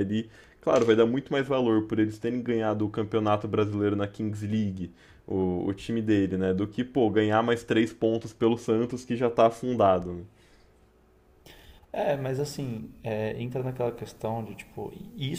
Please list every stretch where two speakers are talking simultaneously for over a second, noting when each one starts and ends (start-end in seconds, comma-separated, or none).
none